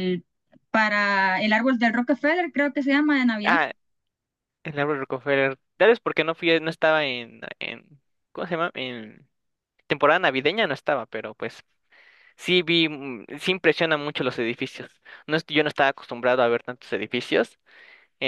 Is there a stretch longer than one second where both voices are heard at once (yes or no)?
no